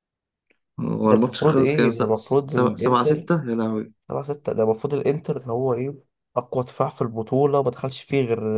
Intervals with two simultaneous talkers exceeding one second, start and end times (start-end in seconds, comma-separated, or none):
1.0-3.3